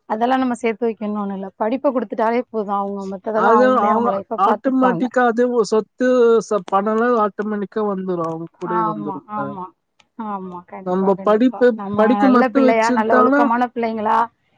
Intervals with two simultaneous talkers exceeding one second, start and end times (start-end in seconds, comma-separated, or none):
10.9-13.4